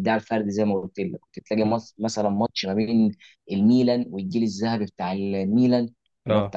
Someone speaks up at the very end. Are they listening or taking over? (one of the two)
listening